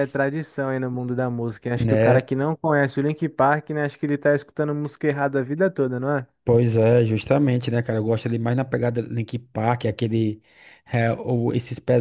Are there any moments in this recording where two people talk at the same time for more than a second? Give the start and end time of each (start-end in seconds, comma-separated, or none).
none